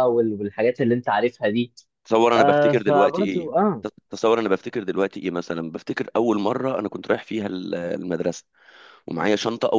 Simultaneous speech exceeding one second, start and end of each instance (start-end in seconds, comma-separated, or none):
2.4-3.9